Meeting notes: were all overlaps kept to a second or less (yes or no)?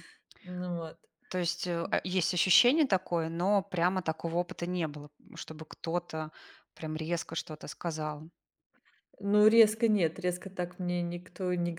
yes